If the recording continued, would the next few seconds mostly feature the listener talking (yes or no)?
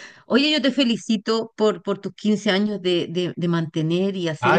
yes